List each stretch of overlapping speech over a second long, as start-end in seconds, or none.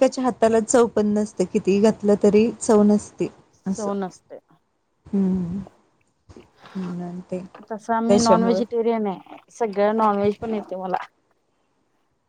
none